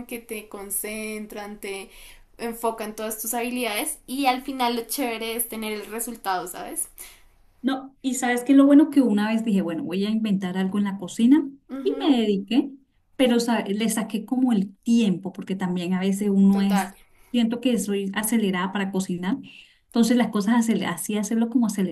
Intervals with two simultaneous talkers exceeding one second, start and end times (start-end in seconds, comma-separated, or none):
none